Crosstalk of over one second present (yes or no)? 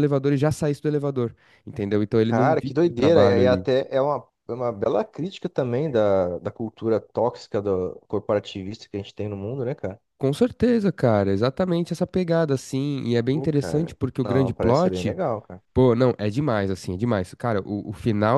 yes